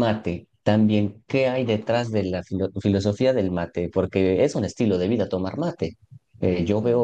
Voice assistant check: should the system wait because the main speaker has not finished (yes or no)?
yes